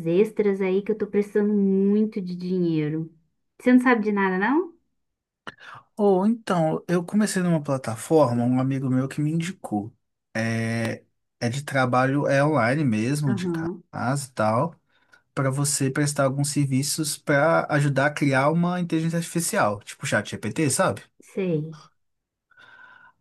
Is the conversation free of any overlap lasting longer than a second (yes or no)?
yes